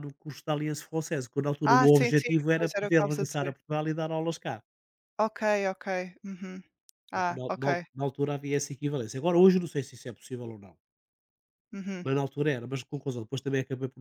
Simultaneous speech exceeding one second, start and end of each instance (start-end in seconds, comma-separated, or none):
1.6-3.6